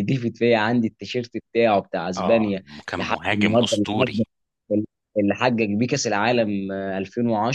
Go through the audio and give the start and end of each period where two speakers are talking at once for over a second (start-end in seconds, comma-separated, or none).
2.2-4.2